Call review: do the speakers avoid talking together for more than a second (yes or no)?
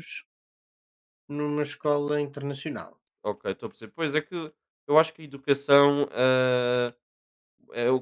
yes